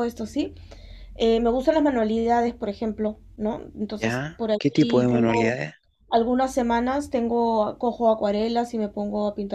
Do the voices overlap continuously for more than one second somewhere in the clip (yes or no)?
yes